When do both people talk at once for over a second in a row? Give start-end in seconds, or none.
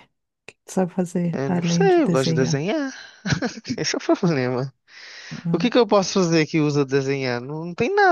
1.3-2.6